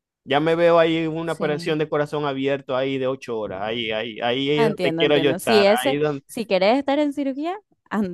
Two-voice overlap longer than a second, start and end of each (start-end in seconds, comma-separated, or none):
4.5-6.2